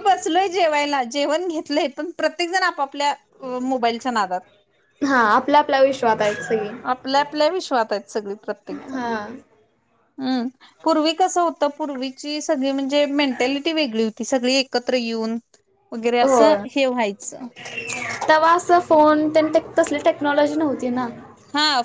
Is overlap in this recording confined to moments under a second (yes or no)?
yes